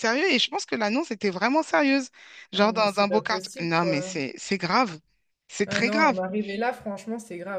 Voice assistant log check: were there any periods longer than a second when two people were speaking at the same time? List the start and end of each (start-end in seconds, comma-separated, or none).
2.5-4.2